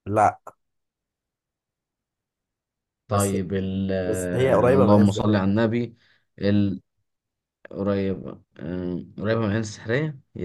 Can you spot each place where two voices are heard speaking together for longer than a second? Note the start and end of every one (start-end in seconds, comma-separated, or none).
4.0-5.4